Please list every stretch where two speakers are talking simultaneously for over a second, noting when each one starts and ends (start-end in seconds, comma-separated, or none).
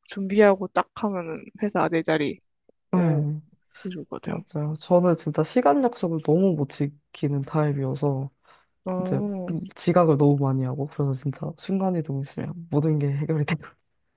none